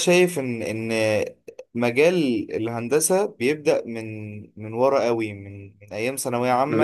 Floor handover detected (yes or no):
no